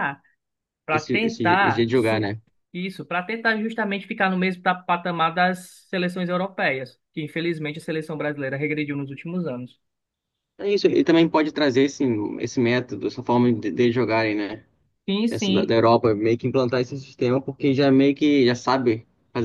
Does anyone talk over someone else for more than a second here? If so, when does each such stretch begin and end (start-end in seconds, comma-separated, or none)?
0.9-2.3